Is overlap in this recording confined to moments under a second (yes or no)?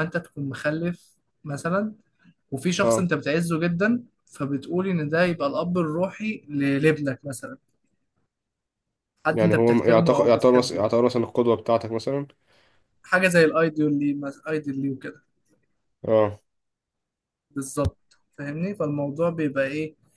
no